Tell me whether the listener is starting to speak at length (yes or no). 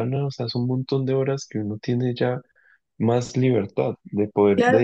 yes